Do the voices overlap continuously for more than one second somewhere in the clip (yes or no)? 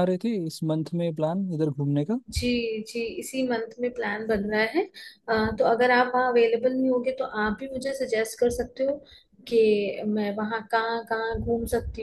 no